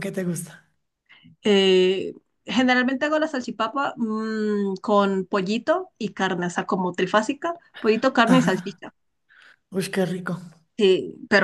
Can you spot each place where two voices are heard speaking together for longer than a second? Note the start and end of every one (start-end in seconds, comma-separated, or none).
none